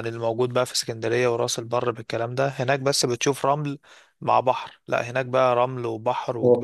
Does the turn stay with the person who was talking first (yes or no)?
no